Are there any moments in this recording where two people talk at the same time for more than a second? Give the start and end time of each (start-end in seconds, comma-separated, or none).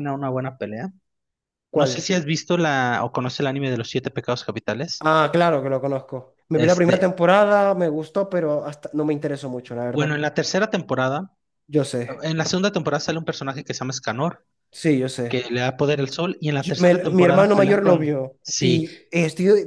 16.6-18.8